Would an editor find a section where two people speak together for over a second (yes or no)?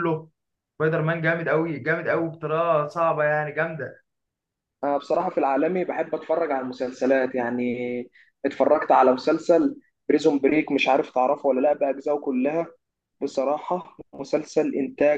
no